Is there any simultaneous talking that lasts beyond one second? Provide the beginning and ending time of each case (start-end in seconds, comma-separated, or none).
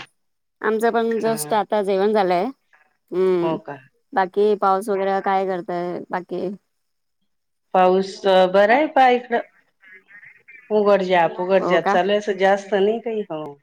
none